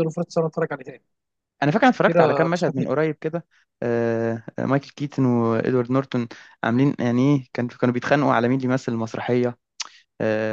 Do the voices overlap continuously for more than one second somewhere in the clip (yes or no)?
yes